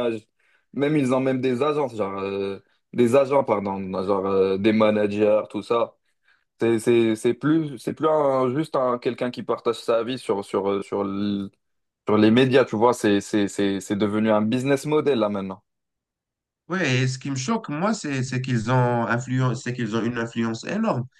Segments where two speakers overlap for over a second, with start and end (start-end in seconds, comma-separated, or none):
none